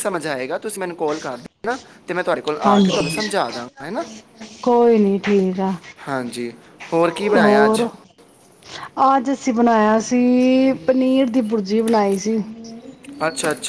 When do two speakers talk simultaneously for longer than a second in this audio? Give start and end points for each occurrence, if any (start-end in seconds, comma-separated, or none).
none